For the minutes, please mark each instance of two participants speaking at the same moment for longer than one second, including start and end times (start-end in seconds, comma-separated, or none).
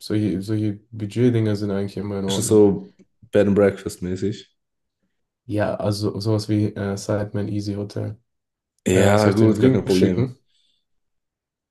8.9-10.3